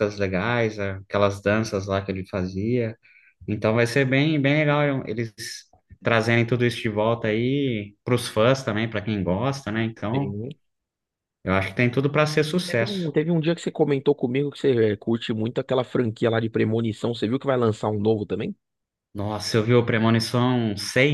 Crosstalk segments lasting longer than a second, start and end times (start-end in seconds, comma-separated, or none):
none